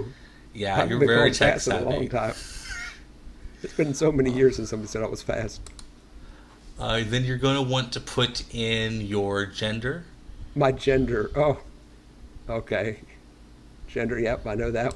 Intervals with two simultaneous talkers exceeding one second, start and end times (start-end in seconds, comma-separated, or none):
0.8-2.1